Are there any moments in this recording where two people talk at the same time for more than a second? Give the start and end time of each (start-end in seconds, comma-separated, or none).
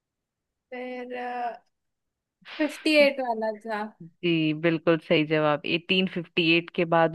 none